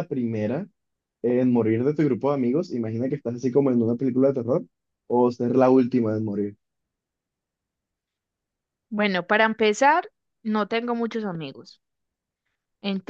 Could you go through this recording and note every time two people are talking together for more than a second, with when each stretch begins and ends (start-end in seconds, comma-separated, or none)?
none